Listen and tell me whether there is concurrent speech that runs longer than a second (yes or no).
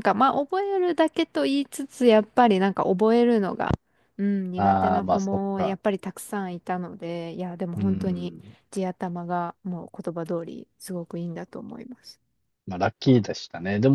yes